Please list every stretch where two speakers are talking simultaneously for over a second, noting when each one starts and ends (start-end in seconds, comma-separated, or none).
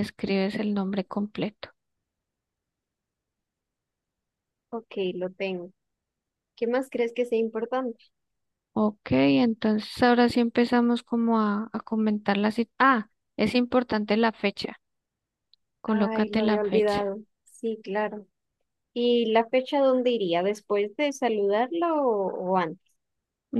15.8-17.1